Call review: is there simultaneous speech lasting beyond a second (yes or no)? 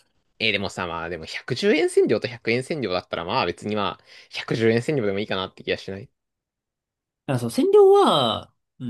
no